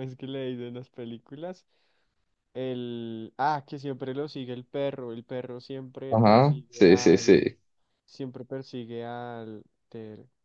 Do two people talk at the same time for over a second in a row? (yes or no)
yes